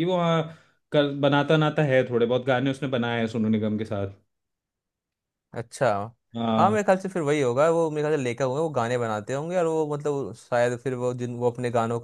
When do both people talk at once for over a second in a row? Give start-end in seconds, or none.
none